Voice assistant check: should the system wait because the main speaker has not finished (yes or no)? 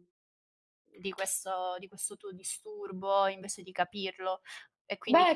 yes